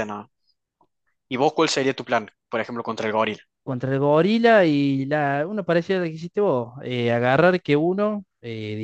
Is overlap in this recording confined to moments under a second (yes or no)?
yes